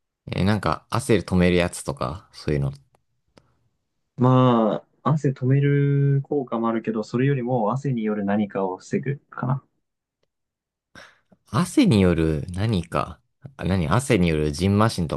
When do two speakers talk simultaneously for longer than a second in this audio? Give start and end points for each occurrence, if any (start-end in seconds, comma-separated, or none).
none